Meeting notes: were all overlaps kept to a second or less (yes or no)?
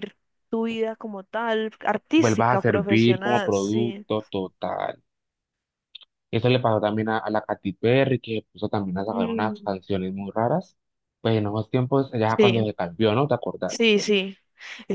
no